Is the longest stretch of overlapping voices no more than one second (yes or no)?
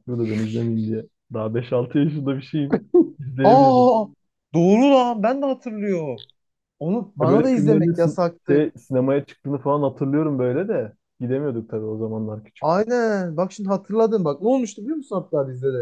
no